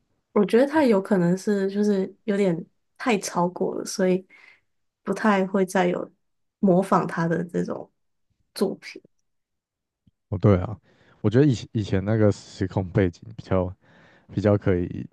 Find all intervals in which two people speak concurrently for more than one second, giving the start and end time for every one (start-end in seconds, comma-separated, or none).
none